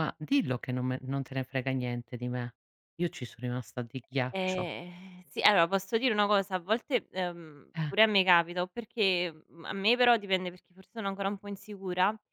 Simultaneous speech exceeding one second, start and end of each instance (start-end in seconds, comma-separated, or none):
none